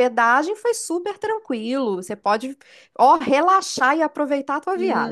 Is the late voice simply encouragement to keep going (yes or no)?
no